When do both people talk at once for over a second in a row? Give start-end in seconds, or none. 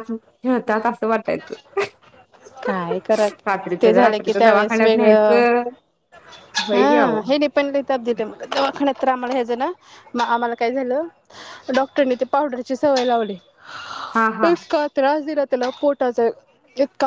3.8-5.1